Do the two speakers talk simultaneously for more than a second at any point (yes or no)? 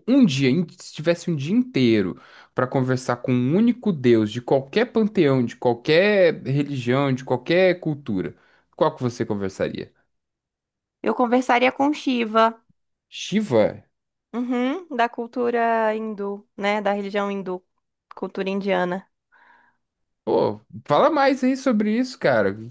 no